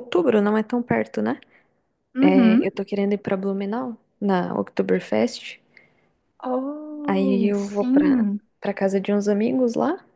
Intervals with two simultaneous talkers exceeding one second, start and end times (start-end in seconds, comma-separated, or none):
7.1-8.4